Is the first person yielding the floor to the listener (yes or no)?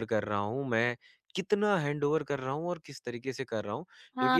yes